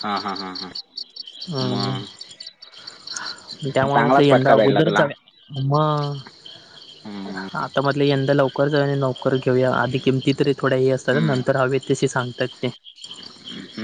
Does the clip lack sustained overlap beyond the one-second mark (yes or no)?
no